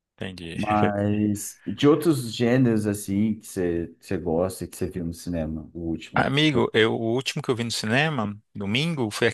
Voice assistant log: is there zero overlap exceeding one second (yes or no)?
yes